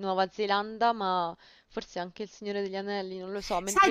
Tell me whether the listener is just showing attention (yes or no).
no